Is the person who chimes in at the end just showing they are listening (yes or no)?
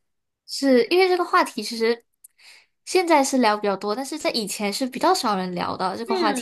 no